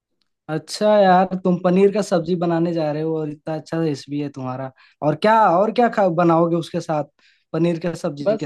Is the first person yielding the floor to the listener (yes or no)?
yes